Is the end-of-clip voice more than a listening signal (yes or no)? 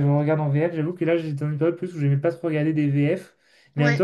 no